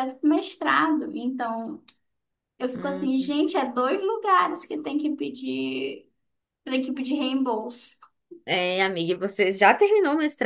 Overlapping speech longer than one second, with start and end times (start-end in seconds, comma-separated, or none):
none